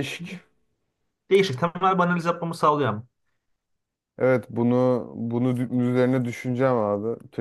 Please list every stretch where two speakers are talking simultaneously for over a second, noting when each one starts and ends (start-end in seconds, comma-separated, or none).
none